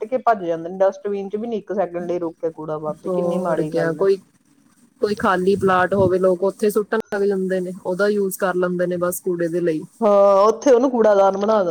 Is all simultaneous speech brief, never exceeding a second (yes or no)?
yes